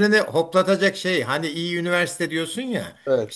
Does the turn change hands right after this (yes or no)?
no